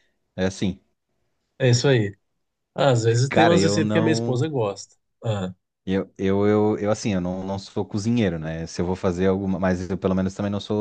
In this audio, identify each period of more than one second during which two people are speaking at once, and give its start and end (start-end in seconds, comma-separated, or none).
3.3-4.5